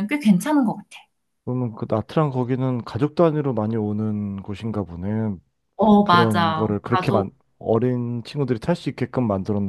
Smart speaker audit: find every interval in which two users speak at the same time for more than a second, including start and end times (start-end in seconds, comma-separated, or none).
6.0-7.3